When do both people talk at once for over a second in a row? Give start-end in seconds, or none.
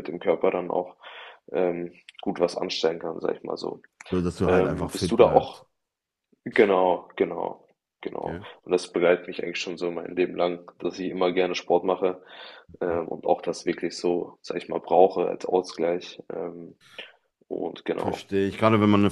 4.4-5.6